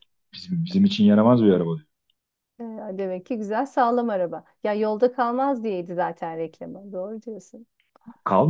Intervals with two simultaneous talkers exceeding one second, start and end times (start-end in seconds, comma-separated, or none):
none